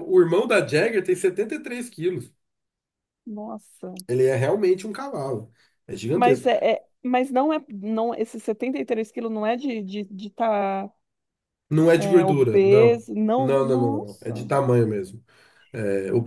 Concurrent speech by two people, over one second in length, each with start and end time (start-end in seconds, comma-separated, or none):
11.9-14.5